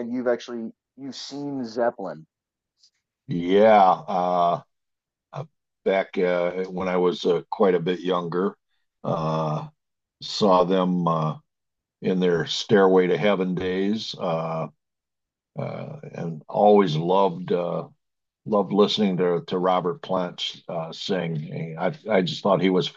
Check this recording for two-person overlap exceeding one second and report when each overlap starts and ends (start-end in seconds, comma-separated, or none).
none